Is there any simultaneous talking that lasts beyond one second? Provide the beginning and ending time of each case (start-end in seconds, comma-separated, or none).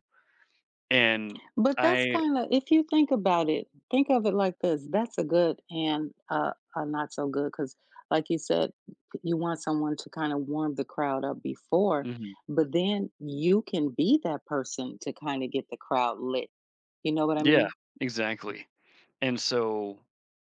none